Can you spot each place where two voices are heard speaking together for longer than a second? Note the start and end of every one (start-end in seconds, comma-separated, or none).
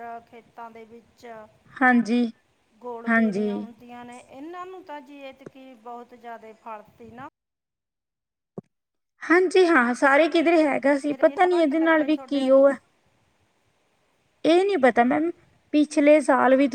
11.1-12.7